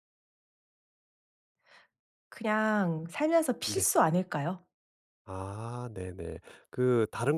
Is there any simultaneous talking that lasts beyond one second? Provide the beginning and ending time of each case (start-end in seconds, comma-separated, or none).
none